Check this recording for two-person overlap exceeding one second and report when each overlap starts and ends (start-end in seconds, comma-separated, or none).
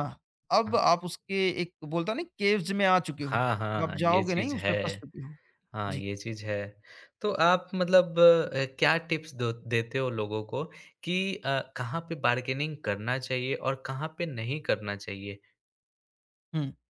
3.2-5.0